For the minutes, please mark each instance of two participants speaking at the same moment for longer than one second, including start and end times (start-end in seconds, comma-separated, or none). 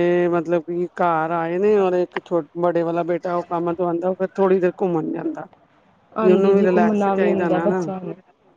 6.2-7.7